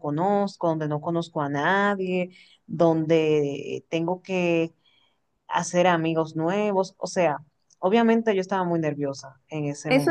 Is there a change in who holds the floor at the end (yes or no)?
yes